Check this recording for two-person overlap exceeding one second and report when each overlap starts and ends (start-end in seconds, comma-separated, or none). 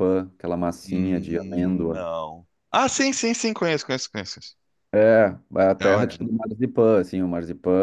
0.8-2.0